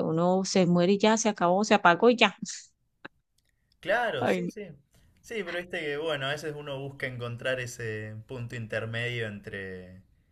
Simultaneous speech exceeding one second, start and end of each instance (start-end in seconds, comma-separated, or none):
none